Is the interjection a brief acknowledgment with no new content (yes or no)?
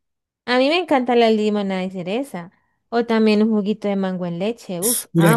no